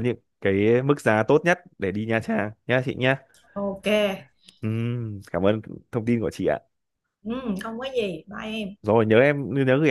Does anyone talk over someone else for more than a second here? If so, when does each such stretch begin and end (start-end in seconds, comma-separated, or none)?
none